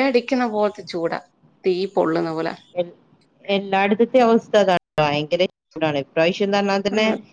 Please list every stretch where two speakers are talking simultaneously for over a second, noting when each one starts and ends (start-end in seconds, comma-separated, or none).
none